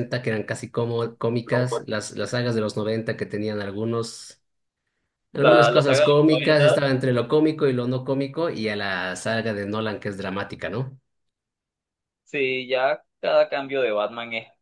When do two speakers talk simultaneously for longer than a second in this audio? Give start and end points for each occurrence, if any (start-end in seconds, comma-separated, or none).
5.3-6.5